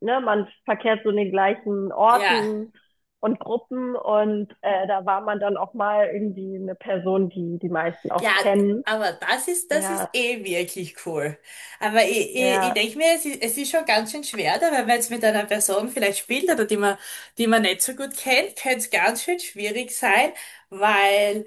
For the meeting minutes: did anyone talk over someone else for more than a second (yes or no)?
no